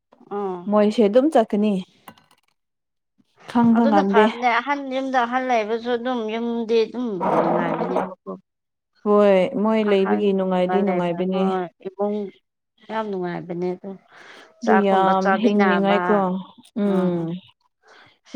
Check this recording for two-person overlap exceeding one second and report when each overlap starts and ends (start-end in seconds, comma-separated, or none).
9.9-11.4